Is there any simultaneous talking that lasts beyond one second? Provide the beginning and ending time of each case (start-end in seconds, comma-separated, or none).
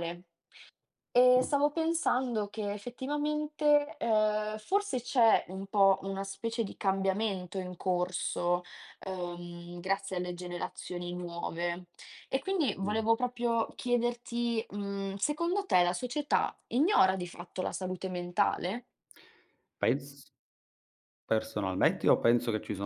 none